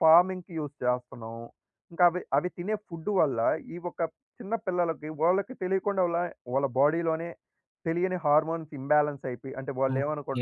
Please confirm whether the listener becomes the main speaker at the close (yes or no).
yes